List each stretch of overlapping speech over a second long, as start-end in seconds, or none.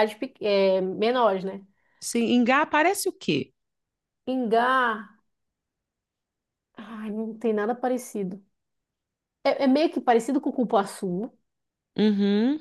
none